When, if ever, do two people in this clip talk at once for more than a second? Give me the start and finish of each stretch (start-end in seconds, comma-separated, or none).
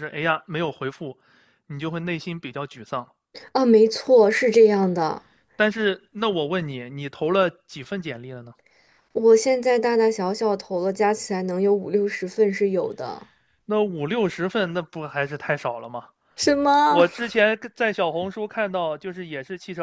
none